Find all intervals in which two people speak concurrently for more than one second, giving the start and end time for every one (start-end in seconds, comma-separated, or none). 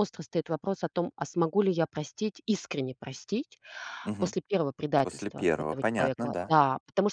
5.0-6.6